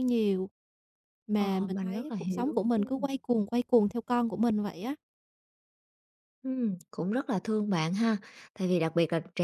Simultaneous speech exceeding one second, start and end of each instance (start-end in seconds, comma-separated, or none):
1.4-3.0